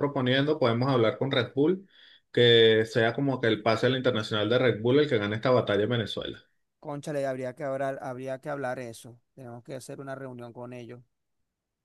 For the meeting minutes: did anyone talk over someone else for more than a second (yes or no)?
no